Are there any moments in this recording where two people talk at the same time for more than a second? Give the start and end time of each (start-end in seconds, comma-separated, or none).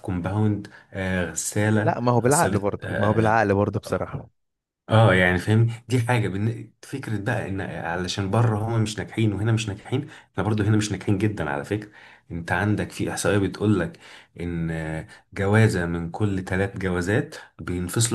1.8-3.3